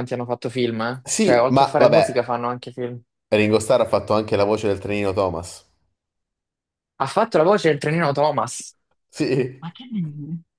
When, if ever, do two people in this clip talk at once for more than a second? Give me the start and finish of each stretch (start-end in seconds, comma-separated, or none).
1.0-2.4